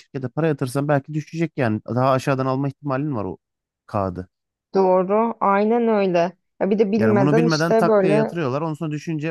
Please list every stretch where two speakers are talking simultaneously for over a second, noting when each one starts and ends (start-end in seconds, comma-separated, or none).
7.0-8.3